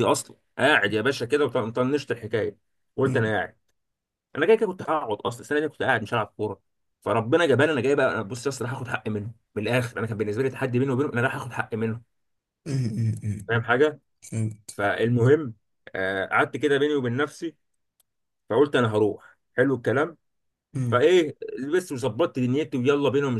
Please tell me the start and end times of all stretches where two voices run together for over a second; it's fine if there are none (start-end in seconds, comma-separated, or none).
none